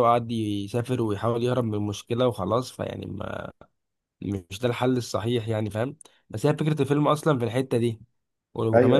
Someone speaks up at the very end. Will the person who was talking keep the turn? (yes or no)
yes